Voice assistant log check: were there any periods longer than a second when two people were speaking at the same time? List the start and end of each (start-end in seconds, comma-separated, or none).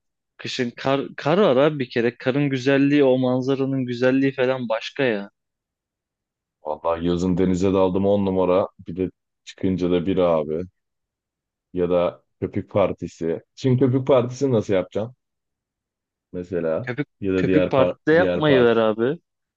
16.8-18.7